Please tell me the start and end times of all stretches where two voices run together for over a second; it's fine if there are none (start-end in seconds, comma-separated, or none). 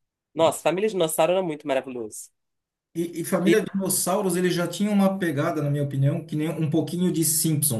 none